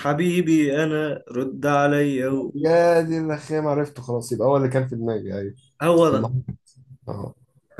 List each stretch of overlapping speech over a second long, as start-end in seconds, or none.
none